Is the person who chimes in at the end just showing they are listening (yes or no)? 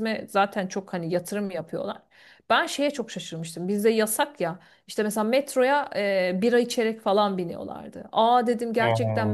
yes